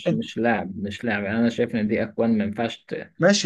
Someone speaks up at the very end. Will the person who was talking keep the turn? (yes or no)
no